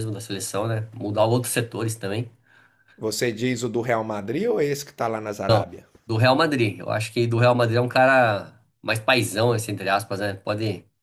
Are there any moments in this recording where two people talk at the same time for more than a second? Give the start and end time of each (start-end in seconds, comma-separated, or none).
none